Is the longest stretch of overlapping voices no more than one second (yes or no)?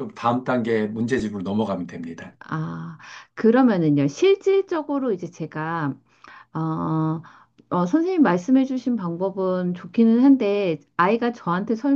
yes